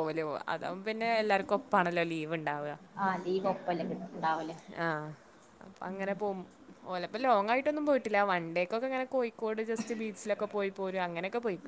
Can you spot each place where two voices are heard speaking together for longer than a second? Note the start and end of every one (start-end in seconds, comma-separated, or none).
none